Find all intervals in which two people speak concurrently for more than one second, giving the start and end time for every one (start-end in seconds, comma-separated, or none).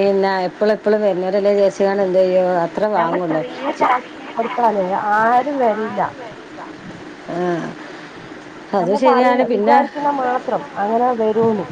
none